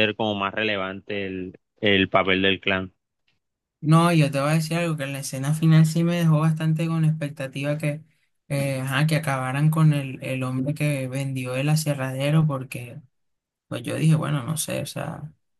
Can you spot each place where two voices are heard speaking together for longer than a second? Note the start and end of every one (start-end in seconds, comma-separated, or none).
none